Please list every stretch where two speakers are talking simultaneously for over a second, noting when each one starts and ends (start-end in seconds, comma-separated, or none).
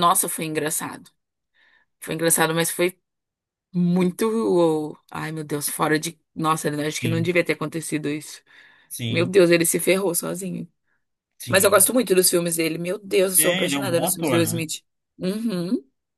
13.4-14.6